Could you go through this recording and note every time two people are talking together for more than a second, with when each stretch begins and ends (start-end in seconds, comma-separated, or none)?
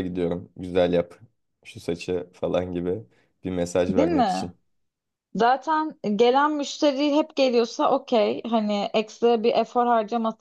none